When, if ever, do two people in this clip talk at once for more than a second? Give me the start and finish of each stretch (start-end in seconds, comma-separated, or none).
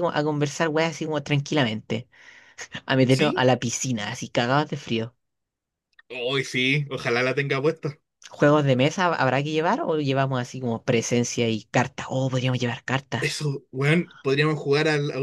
none